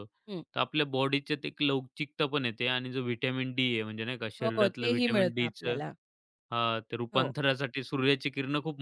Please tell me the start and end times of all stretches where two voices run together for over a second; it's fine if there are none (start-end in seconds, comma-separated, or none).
4.4-5.8